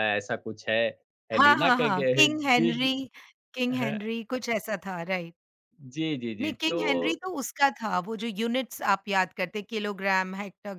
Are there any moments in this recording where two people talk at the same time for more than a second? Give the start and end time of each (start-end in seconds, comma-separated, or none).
1.3-2.9